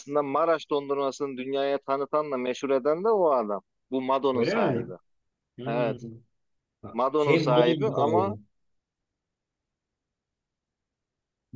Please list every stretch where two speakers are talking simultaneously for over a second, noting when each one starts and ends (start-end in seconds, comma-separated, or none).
7.2-8.4